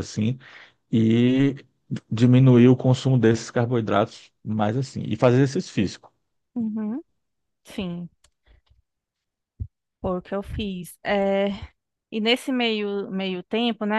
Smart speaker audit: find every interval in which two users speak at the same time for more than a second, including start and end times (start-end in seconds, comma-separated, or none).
none